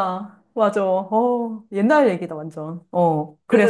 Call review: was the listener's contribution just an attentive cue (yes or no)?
no